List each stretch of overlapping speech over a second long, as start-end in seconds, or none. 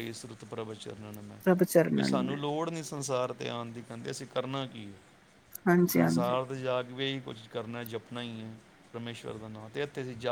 none